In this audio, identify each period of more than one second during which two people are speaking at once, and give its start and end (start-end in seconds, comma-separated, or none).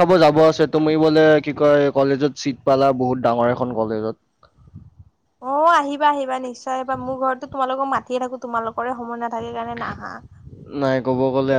none